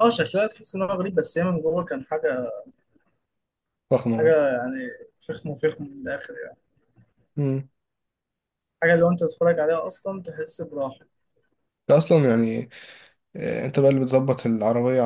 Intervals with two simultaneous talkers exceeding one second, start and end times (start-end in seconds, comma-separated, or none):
none